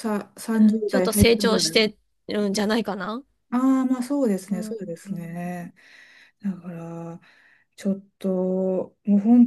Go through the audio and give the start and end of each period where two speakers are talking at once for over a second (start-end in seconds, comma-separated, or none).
0.6-1.9